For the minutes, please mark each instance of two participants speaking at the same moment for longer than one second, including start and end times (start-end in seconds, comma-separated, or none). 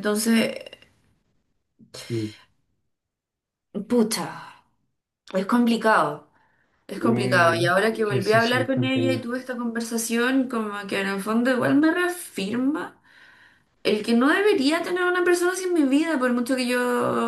7.0-9.2